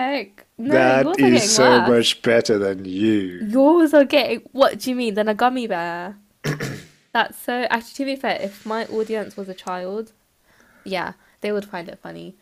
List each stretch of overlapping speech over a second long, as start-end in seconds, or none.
0.7-2.2